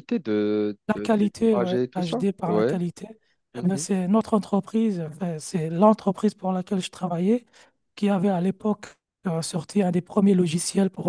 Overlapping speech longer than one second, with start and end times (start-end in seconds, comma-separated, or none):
0.9-2.8